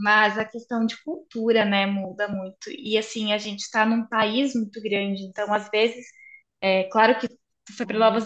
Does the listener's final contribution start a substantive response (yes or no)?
no